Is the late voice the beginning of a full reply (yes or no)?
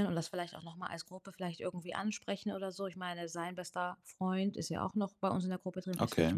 no